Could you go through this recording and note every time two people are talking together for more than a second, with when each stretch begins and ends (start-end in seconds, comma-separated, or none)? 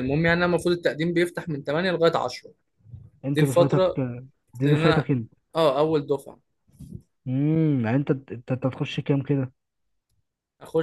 none